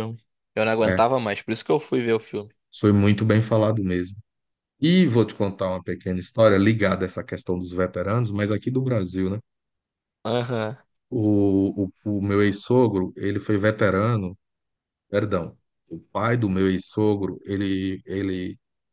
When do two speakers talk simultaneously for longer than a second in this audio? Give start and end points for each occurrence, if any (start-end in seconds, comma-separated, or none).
none